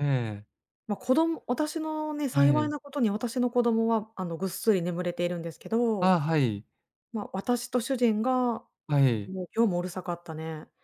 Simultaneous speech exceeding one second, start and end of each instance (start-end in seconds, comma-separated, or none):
none